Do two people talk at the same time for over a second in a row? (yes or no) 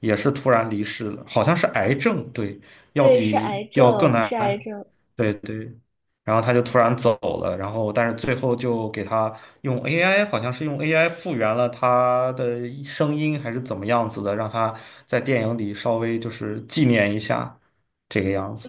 yes